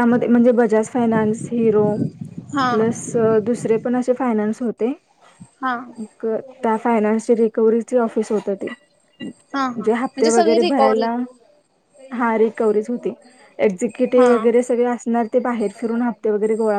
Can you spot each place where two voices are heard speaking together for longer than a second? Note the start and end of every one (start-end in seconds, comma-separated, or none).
9.6-11.1